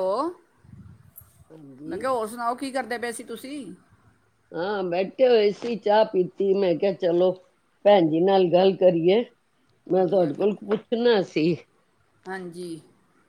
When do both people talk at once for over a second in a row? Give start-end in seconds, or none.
none